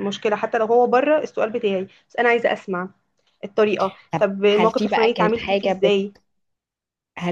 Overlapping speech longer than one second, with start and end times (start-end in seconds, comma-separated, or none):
4.1-5.7